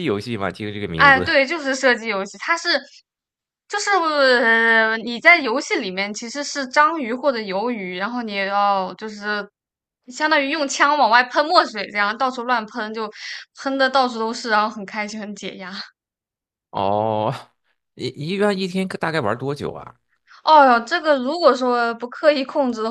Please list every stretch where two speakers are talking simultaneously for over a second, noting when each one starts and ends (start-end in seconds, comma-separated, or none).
none